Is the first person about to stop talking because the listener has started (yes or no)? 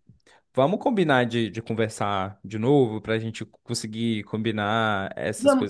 yes